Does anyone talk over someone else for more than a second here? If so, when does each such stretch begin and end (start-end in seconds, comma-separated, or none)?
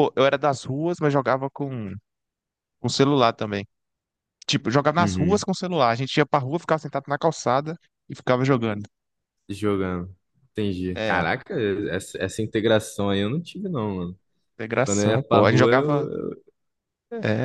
14.8-16.1